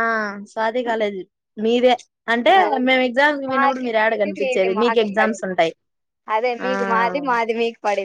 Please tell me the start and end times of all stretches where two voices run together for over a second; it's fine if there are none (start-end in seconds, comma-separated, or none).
3.5-5.5